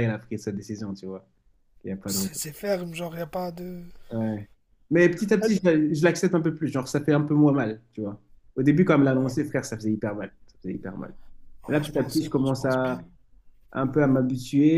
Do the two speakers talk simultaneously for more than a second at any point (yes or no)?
yes